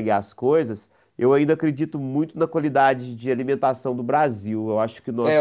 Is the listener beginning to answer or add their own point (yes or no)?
yes